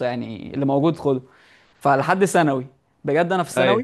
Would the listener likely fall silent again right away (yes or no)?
yes